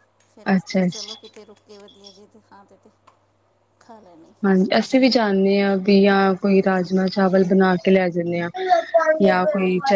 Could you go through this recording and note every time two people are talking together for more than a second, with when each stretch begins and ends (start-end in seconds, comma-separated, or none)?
none